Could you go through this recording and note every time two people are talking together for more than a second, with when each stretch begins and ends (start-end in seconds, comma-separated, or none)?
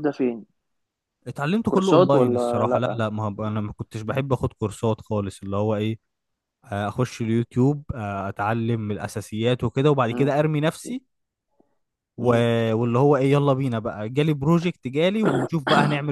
1.6-3.0